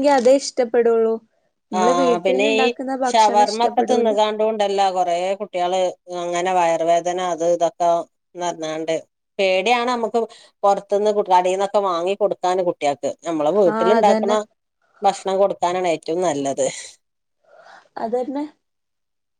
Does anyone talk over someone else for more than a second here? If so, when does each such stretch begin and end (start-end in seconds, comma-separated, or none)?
none